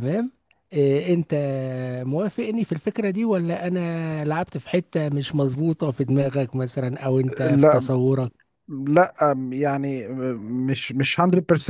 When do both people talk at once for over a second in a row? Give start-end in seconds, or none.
none